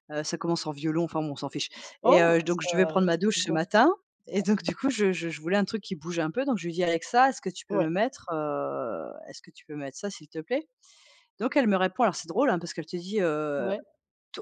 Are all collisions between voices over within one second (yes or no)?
no